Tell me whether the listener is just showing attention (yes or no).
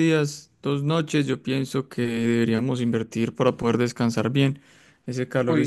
yes